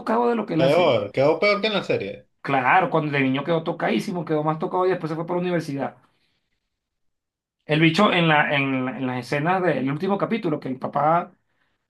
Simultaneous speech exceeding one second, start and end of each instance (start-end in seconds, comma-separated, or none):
none